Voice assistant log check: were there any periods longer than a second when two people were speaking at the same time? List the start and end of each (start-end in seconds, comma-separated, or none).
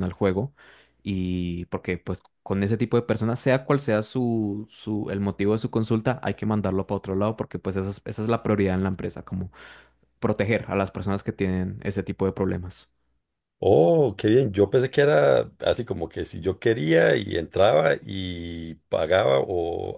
none